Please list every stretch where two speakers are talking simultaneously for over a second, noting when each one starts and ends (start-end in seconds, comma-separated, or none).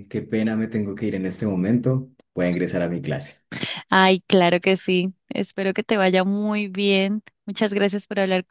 none